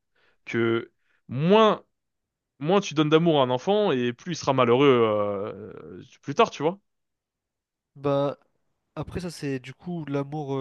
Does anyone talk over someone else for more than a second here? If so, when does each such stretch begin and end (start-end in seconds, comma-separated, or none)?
none